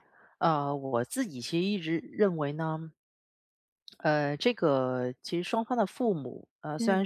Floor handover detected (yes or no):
no